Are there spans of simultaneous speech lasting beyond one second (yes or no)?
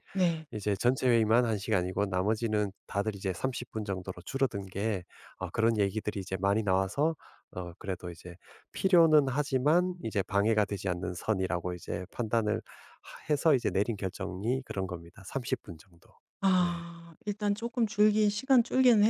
no